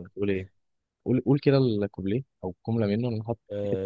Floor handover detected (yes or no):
yes